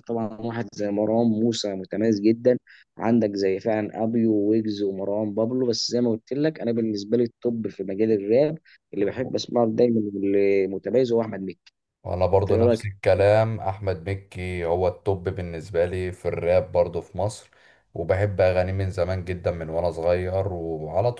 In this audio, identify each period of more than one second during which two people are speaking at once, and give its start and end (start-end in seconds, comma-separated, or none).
none